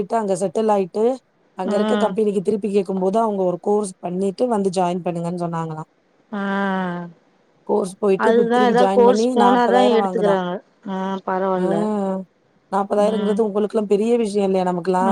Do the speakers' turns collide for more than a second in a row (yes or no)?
yes